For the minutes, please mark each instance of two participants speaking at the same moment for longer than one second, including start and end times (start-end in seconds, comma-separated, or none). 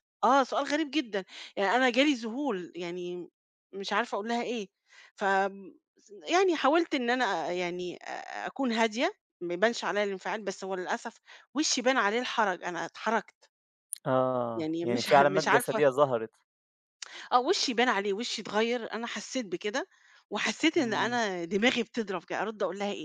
14.6-15.8